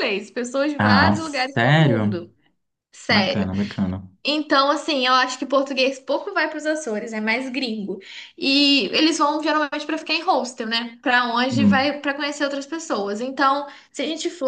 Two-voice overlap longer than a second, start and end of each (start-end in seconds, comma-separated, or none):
0.8-2.2